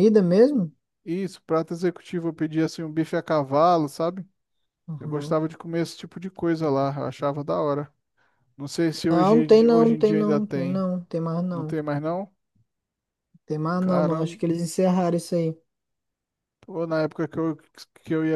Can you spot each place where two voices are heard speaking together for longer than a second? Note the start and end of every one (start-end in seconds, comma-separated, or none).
9.1-10.8